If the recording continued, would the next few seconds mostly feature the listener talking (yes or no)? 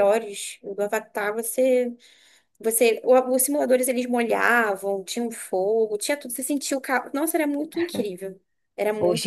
yes